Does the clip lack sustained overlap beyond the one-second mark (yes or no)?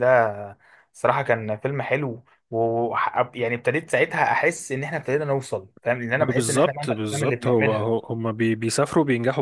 no